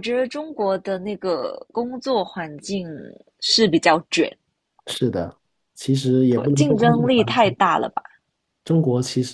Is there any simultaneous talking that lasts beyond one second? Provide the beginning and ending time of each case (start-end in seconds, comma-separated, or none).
6.3-7.5